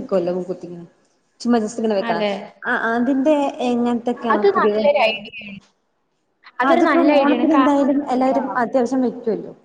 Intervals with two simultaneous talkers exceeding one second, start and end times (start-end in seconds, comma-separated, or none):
6.7-8.4